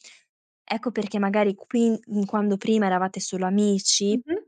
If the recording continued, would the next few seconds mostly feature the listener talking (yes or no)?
no